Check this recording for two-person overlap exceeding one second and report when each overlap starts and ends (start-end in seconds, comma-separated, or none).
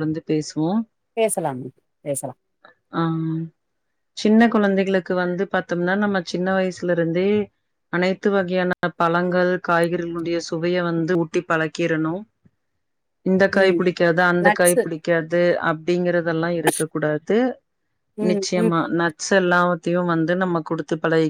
none